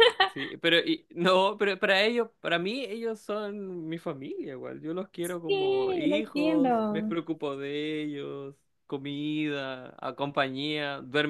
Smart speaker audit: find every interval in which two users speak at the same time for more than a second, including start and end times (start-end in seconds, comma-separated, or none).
5.5-7.2